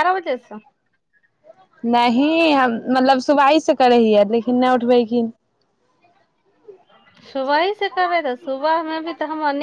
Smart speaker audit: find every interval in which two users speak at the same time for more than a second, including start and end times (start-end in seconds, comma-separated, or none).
none